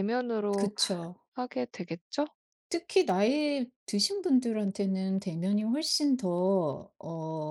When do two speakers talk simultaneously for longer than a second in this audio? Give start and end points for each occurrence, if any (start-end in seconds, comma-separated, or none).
none